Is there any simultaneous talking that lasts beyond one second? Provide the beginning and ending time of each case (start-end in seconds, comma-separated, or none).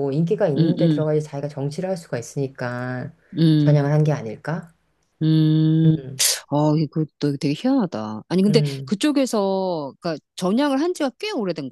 none